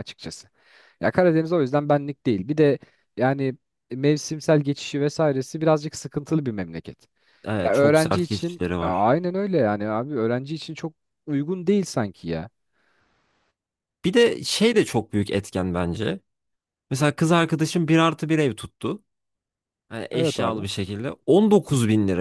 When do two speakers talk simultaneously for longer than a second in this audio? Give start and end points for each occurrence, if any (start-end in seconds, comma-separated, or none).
7.6-9.1